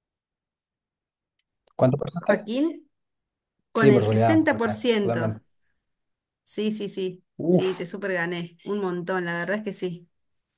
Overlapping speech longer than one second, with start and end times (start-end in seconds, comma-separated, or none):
3.7-5.3